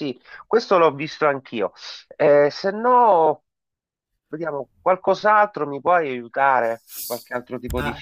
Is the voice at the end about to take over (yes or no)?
yes